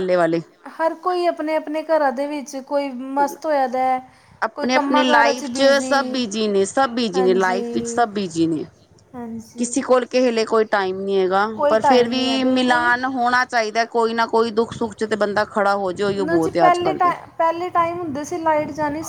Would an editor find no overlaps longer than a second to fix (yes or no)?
no